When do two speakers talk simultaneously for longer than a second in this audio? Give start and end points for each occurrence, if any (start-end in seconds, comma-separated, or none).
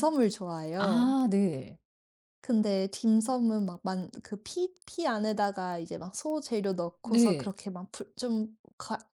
none